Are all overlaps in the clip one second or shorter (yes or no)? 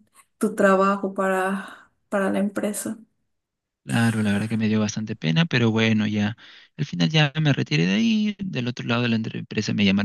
yes